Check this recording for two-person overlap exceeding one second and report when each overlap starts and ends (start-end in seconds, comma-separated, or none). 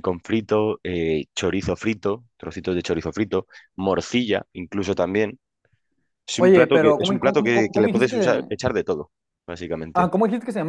6.4-8.5